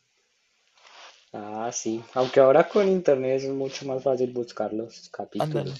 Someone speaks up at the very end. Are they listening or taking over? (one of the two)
taking over